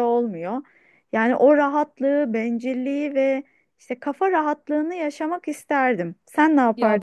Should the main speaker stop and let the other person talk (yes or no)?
yes